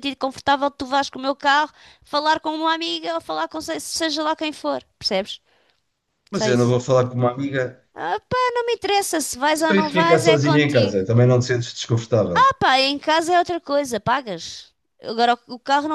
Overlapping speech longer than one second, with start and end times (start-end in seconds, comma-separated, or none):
9.6-11.0